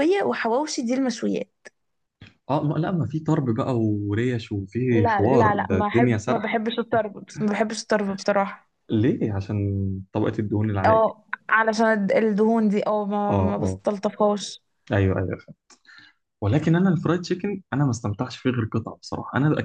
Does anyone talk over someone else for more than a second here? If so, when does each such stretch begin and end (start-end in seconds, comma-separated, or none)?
5.0-6.6